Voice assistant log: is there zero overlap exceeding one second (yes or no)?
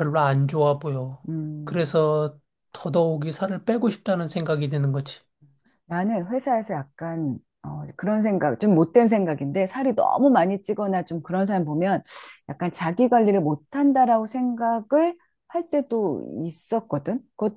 yes